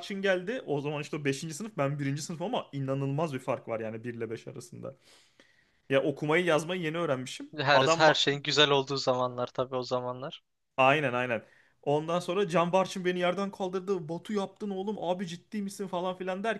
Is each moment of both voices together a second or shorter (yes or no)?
yes